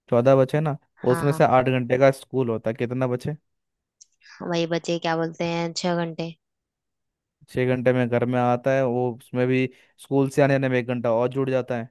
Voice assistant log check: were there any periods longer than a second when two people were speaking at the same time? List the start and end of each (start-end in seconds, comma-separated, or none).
none